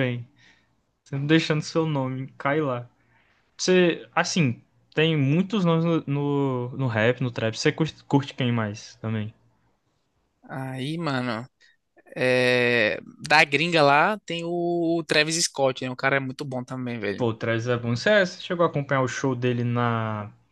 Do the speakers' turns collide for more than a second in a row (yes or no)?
no